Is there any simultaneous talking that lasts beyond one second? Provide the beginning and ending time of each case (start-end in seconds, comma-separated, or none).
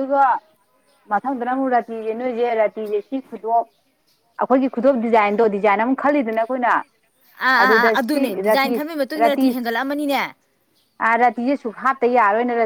7.6-9.7